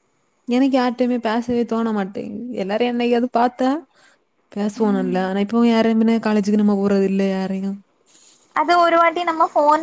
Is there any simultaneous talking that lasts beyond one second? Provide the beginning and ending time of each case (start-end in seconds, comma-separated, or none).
none